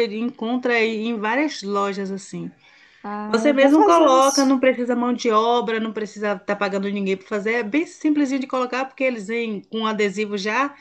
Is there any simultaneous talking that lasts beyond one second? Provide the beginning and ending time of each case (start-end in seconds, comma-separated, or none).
3.3-4.6